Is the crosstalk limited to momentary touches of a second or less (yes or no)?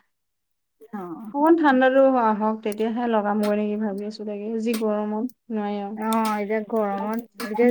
yes